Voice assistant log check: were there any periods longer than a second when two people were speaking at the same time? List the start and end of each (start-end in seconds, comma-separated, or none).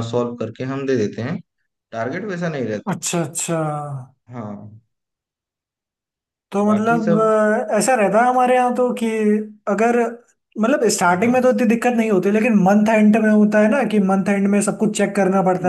none